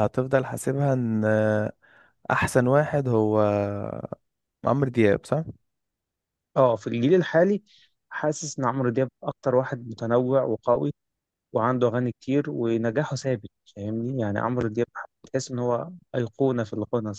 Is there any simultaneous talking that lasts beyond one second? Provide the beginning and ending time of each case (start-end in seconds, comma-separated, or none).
none